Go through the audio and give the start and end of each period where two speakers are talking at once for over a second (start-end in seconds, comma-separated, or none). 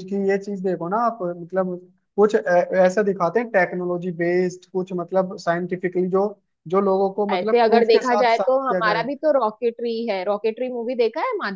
7.3-9.1